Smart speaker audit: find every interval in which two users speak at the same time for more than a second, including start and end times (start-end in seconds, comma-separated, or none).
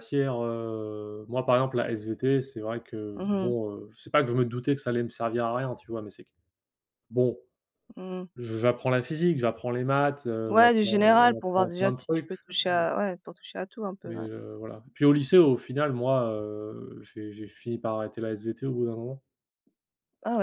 10.5-12.3